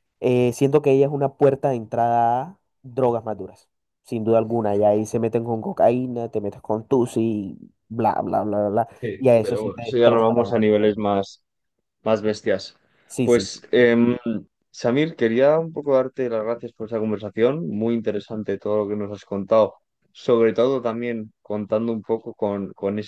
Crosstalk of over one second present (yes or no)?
yes